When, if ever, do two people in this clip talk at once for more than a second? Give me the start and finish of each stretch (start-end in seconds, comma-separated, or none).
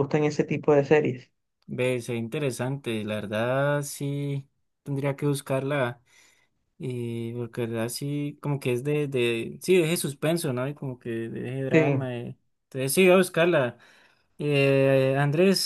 none